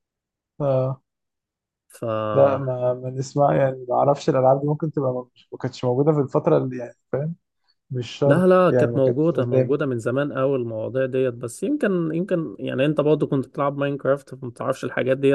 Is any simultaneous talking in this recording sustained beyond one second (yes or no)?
yes